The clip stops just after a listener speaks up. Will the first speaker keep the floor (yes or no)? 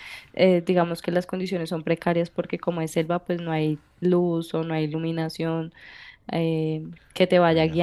yes